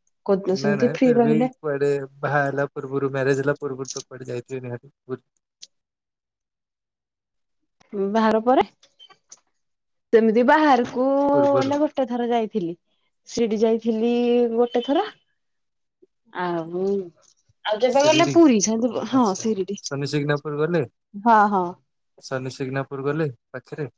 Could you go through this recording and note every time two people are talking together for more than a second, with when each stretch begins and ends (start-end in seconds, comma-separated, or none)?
none